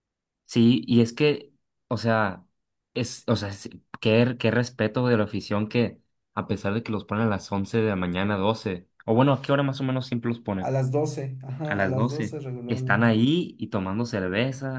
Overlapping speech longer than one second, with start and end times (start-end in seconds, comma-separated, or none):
11.7-13.2